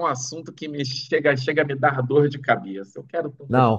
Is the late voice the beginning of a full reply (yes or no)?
yes